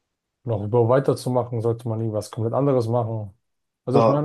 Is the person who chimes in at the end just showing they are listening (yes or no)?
no